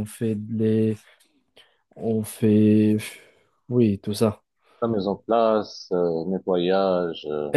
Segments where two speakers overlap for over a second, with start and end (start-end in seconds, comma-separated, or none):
none